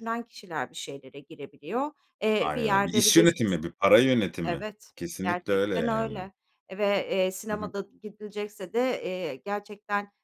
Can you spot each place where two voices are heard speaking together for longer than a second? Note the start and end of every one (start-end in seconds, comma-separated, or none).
2.4-3.6, 4.5-6.3